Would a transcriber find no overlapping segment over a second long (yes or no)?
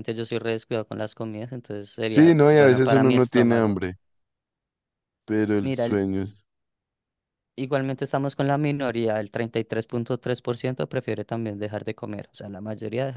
no